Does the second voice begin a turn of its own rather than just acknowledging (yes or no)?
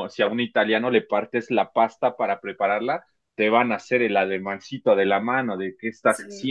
yes